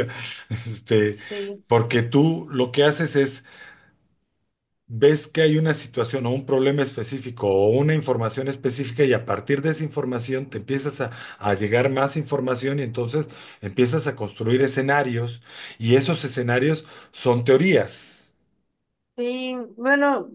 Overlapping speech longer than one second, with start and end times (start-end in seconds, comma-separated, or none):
none